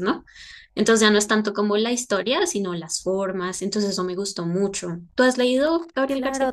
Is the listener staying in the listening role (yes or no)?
no